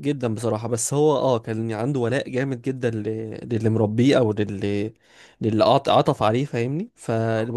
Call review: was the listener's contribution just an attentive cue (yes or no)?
yes